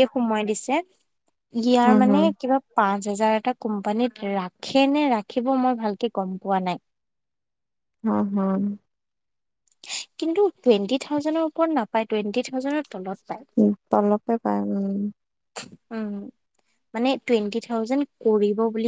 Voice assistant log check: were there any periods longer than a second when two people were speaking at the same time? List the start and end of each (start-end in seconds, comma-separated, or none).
none